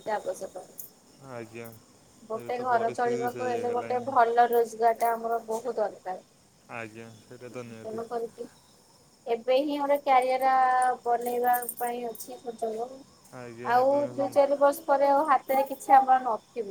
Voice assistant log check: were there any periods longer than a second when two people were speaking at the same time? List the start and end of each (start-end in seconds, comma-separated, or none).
2.4-4.0